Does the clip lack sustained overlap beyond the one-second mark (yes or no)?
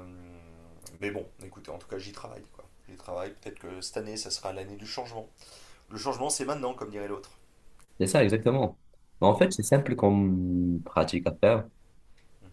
yes